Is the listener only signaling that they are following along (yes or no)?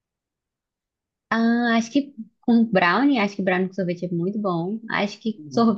yes